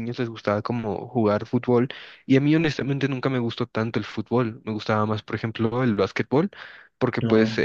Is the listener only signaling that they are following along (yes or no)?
yes